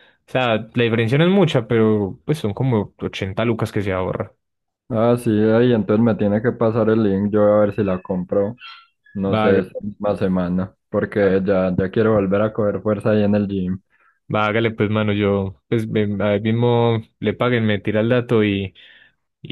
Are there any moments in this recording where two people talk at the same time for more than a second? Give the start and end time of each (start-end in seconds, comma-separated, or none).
none